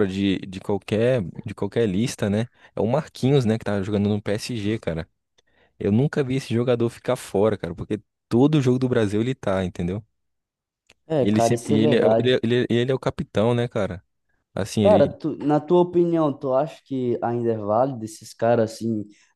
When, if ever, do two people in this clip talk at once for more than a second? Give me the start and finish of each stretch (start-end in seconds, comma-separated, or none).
11.2-12.4